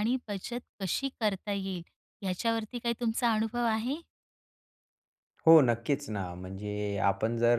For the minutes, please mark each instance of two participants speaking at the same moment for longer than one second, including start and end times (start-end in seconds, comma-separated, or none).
none